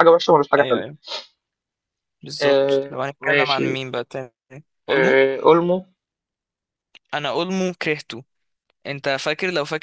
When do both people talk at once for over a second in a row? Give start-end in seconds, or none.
2.4-3.8